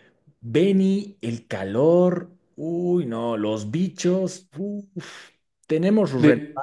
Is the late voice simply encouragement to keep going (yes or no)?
yes